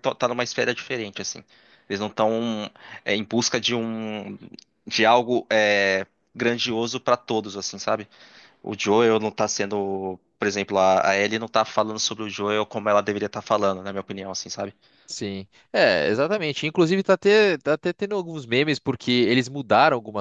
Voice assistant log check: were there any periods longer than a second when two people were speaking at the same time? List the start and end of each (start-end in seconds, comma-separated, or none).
none